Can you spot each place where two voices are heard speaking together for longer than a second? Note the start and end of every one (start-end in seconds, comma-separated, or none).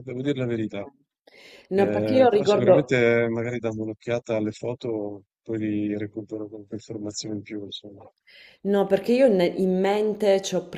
1.7-3.0